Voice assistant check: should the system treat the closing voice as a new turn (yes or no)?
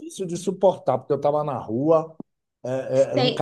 yes